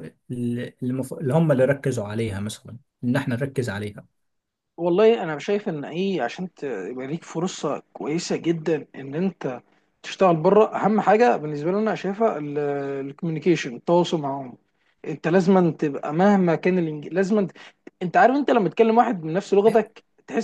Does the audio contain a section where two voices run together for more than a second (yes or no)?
no